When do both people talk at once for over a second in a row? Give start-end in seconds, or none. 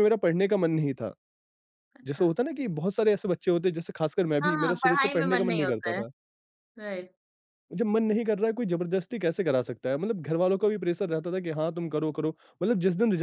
4.4-6.0